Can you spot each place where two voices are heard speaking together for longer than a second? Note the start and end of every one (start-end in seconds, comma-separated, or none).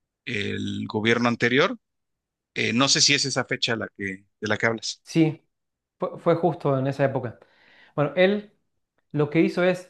none